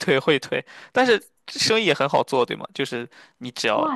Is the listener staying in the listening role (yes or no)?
no